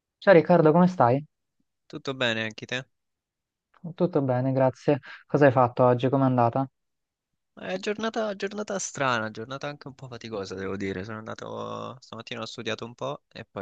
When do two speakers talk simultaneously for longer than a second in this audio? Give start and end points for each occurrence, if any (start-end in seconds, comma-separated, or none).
none